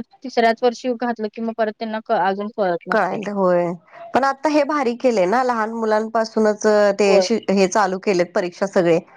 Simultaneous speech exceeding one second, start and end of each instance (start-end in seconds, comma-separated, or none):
none